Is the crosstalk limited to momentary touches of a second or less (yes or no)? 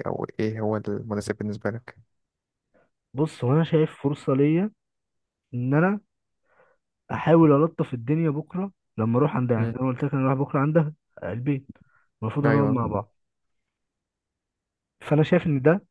yes